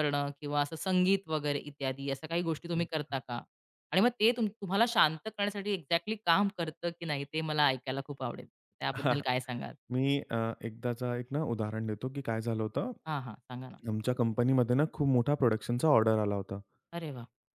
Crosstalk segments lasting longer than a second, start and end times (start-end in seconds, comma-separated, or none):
none